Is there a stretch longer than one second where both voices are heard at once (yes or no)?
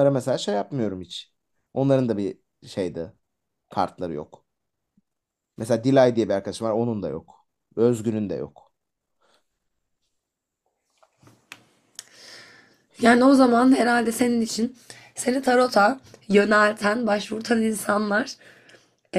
no